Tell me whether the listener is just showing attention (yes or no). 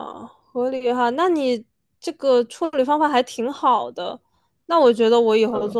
yes